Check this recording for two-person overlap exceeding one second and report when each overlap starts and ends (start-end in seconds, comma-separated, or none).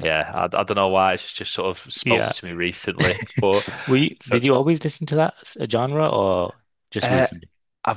none